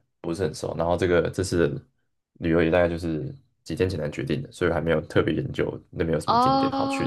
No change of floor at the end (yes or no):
no